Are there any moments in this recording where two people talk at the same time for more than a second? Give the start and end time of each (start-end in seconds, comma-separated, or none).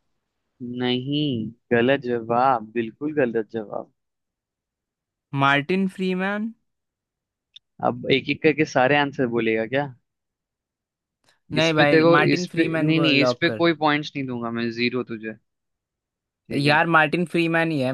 11.6-13.7